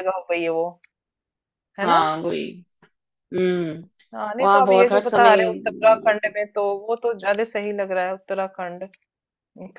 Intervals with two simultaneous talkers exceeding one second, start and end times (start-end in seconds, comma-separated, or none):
4.4-6.3